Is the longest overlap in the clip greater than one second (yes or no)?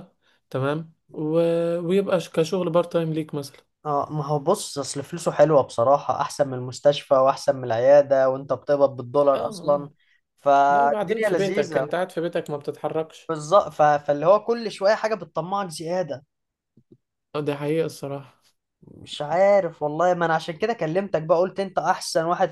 yes